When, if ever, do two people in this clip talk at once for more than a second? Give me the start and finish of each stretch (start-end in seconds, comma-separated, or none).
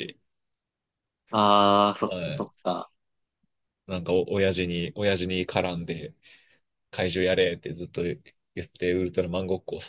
none